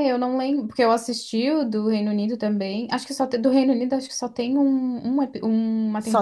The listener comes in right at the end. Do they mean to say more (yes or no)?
yes